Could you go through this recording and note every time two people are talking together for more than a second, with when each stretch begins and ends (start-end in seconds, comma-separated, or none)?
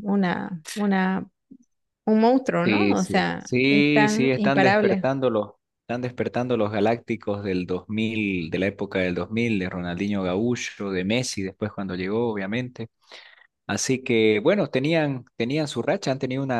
2.6-5.1